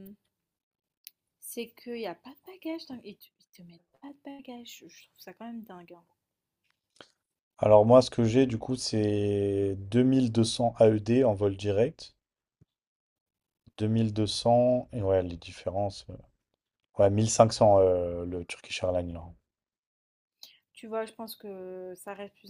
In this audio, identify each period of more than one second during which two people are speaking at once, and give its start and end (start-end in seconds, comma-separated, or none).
none